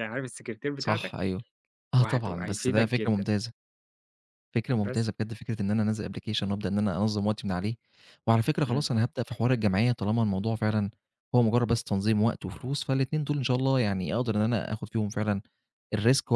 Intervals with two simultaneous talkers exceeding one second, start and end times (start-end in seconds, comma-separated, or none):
2.0-3.3